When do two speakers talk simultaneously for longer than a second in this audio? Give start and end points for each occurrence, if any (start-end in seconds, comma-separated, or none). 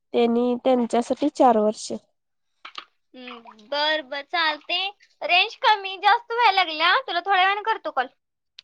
none